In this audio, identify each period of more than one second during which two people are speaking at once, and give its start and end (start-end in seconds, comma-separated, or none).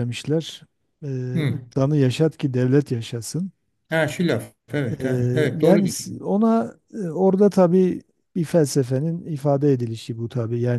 5.0-6.3